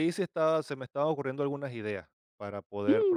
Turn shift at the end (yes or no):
yes